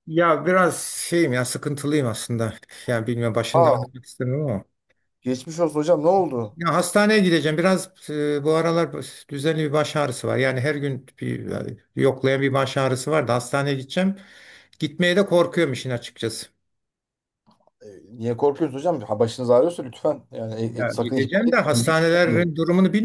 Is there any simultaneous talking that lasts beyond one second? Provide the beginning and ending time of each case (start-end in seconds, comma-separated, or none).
20.8-22.0